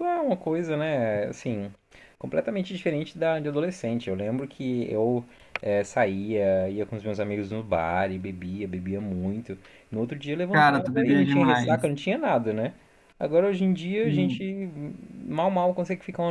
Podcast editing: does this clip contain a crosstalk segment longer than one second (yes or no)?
yes